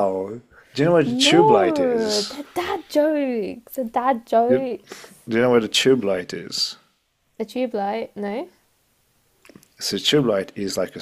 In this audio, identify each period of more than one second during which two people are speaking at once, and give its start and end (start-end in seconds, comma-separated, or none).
1.0-2.4